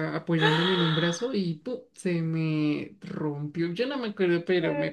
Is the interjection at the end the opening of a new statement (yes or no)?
no